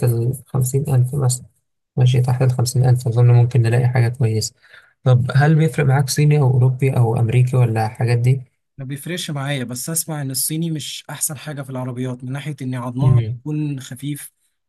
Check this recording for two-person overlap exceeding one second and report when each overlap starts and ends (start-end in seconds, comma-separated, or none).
none